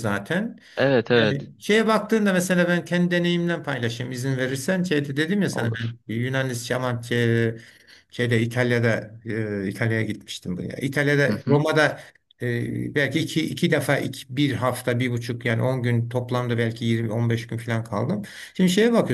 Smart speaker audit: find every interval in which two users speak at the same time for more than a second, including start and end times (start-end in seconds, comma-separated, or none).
none